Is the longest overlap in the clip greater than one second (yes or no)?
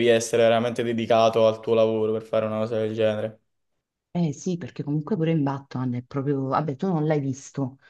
no